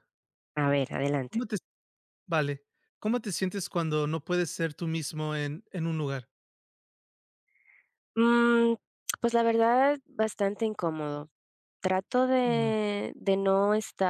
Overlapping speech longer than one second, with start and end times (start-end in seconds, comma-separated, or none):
none